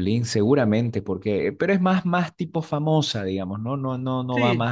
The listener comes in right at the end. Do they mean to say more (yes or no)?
no